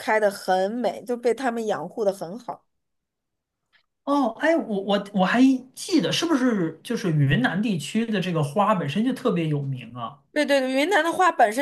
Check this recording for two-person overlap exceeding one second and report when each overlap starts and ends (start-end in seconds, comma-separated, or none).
none